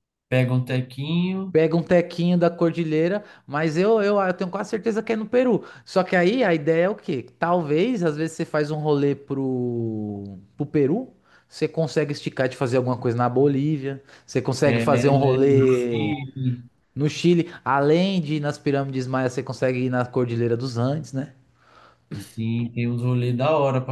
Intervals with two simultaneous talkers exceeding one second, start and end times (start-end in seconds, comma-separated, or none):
14.7-16.1